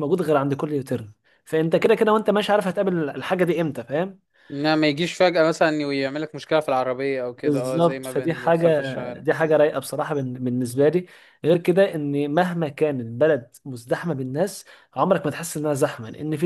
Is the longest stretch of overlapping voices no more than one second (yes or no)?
no